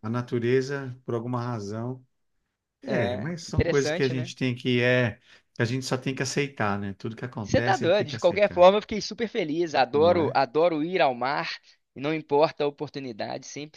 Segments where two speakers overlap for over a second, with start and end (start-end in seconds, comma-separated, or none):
2.9-4.3, 7.4-8.7